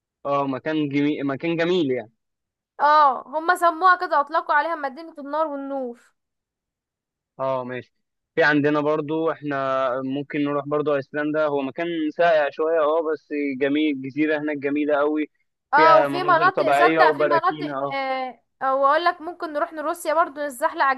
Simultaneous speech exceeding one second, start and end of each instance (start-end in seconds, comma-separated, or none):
15.7-18.0